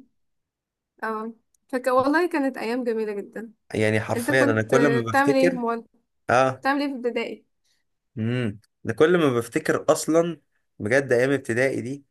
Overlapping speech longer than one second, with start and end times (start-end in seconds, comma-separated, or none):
4.2-5.7